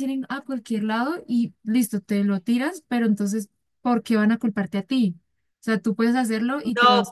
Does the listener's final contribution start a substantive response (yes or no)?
yes